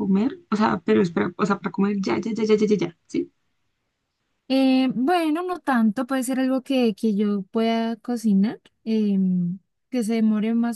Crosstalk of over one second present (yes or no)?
no